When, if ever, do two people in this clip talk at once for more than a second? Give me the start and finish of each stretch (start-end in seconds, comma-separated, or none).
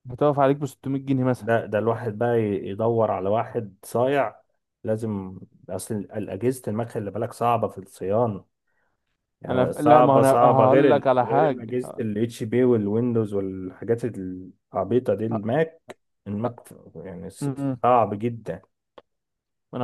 9.5-12.0